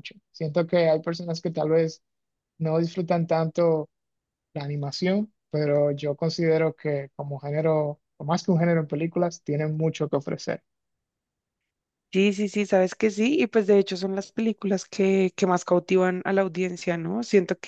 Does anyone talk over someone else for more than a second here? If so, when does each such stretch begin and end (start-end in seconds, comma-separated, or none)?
none